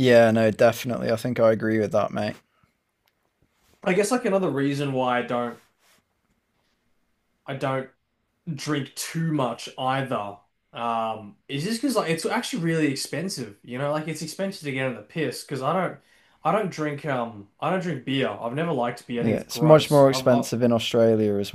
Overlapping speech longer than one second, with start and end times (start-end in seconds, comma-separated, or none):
19.2-20.4